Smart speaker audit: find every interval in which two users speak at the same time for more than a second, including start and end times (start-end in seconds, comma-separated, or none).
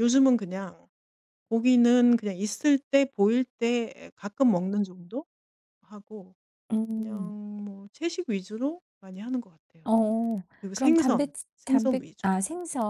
10.7-12.3